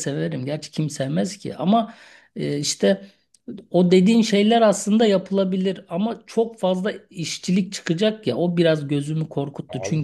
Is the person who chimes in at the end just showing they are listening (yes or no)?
yes